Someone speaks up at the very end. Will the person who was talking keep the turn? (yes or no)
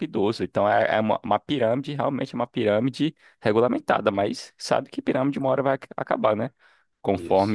yes